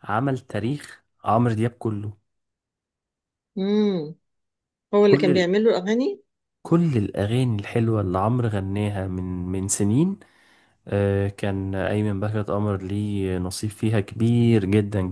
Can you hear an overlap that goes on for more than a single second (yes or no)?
no